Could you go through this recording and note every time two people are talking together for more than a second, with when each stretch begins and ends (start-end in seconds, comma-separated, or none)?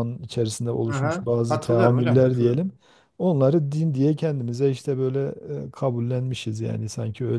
0.9-2.6